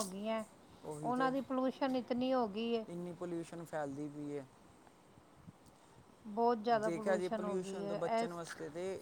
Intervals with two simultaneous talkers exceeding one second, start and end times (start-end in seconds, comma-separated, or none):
6.8-8.4